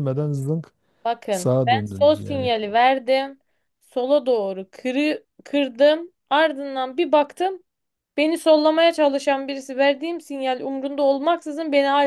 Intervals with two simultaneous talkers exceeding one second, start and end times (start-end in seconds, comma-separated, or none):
1.3-2.5